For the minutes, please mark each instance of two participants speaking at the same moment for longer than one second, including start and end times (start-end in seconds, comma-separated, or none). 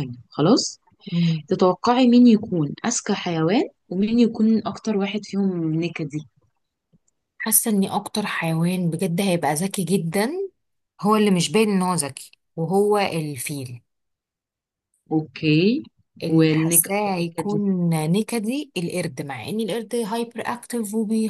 16.3-17.6